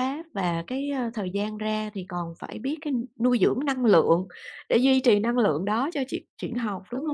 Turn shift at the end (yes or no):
yes